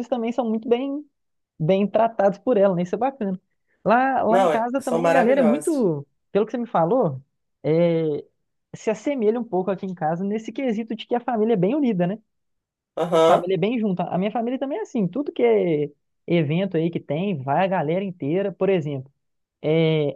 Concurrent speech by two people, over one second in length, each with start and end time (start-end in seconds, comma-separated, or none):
4.3-5.9